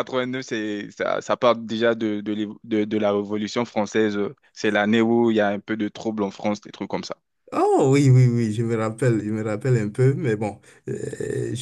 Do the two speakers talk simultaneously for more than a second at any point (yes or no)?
no